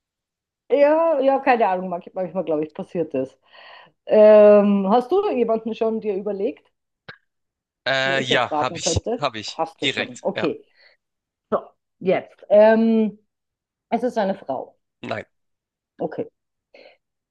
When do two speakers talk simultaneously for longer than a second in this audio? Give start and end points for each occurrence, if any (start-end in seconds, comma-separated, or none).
8.0-10.5